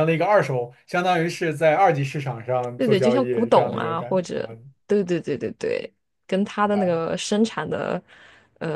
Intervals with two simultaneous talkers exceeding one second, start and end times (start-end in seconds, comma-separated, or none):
2.8-4.5